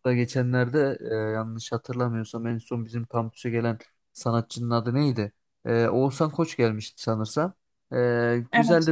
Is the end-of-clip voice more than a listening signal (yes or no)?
no